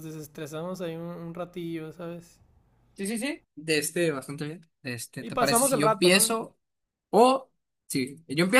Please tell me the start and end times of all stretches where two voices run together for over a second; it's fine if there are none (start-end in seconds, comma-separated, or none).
5.2-6.4